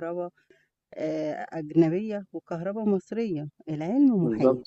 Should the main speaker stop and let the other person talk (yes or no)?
no